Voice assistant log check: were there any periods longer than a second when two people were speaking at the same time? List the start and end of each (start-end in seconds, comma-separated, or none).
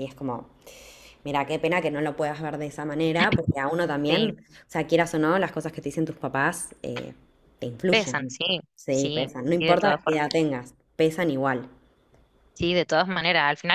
7.9-10.2